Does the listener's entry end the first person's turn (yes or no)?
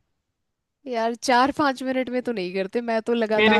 yes